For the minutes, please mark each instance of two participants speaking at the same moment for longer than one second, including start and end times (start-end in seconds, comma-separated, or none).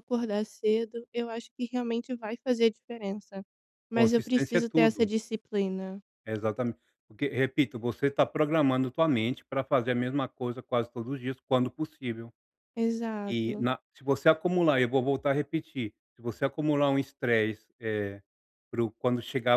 3.9-5.1